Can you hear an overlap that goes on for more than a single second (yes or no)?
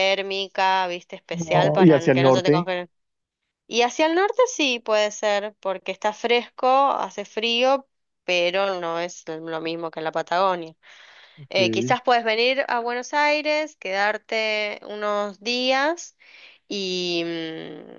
yes